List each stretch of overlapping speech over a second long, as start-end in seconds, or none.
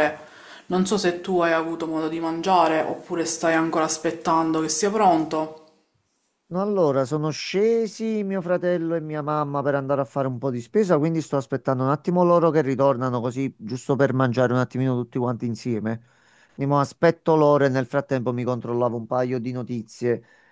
none